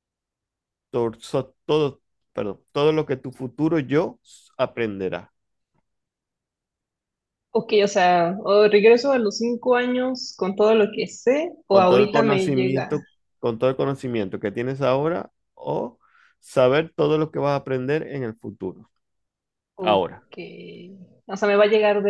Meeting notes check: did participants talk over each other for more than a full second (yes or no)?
yes